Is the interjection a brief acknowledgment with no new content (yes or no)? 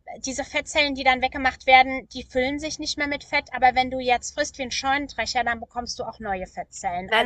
yes